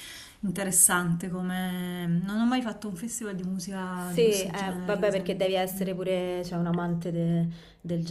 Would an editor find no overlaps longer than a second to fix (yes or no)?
no